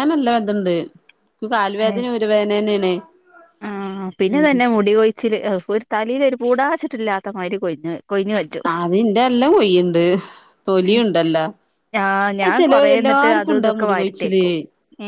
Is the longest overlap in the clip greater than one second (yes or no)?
yes